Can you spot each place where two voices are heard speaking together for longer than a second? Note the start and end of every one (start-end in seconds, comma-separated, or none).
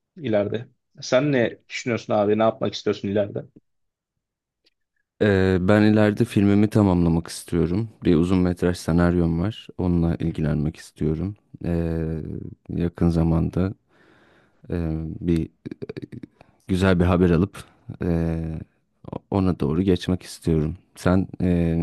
none